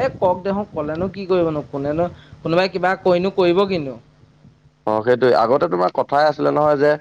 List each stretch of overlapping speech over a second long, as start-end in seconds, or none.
none